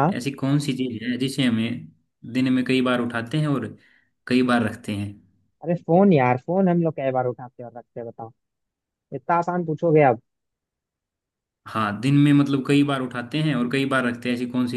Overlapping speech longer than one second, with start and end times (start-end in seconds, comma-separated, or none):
none